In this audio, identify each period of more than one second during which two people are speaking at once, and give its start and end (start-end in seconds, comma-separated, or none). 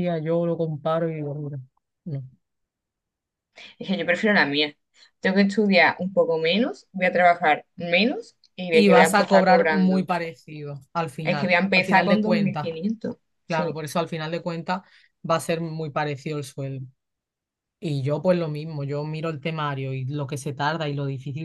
8.7-10.1, 11.2-12.7